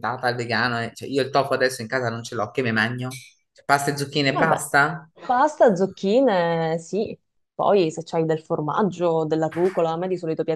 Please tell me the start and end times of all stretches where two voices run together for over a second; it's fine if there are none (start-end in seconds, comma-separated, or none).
none